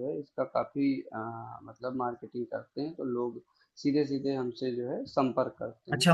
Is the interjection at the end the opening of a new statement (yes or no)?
yes